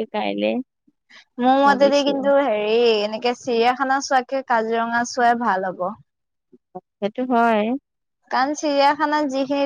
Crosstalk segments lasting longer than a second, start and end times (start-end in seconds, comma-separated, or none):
none